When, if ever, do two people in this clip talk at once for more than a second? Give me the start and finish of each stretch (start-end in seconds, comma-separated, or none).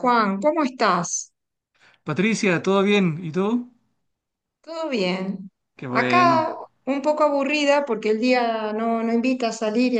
none